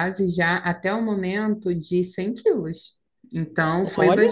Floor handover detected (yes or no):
no